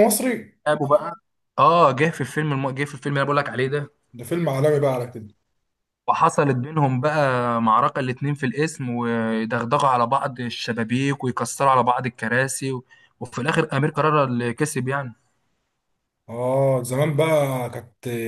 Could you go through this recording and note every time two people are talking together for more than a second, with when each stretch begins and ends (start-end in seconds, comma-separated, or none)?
none